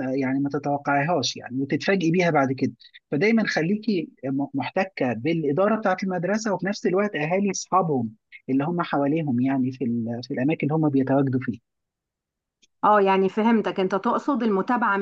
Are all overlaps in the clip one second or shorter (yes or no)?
yes